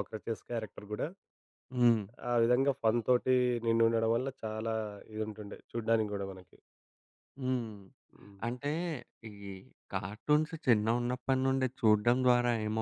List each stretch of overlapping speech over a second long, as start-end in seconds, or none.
none